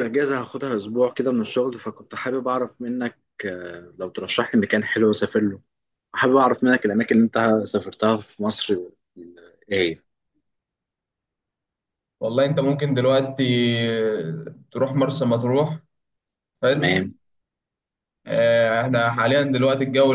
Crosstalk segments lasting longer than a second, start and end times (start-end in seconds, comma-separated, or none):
none